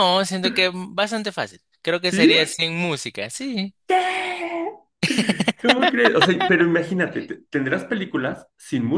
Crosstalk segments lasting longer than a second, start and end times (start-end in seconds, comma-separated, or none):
none